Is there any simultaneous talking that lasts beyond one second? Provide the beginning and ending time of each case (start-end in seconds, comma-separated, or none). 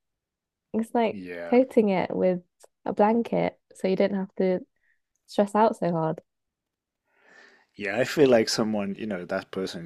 none